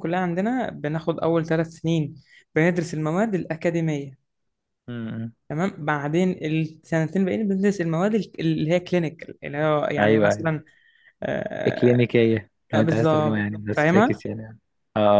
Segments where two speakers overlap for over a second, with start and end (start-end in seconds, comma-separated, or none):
12.7-14.2